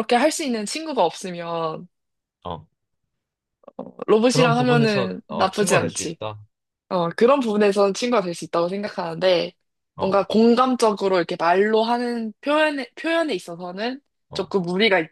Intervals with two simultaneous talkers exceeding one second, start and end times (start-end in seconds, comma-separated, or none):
4.3-6.2